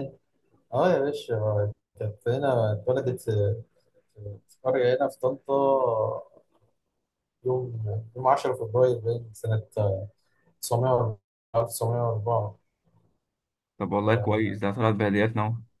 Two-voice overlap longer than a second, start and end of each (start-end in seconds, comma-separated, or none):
none